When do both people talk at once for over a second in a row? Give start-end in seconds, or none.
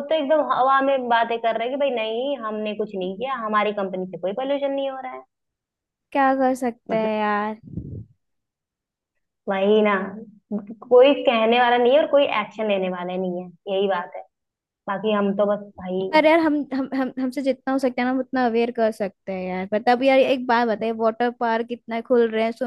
none